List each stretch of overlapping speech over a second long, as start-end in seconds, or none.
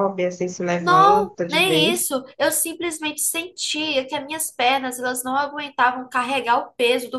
0.8-2.1